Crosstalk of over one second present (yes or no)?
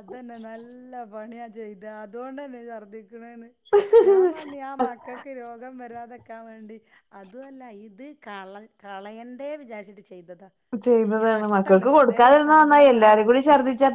yes